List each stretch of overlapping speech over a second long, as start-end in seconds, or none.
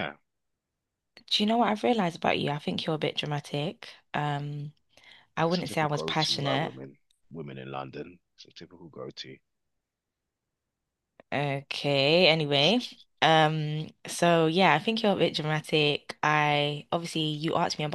5.5-6.7